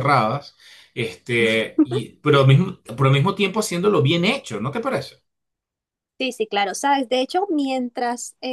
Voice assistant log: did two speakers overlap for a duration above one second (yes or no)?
no